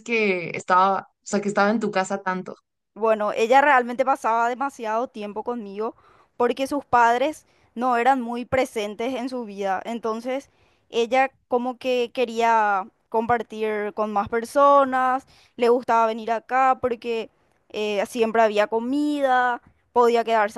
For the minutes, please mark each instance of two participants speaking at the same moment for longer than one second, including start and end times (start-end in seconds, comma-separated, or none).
none